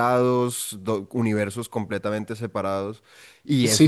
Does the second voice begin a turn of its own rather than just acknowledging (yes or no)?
yes